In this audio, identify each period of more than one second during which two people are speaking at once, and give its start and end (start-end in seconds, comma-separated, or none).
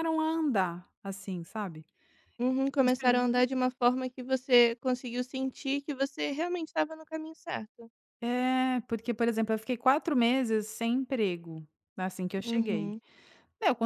none